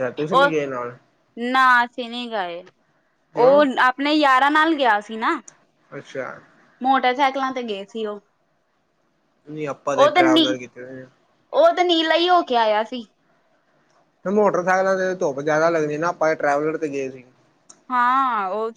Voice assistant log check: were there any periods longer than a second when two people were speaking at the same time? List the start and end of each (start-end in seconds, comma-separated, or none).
none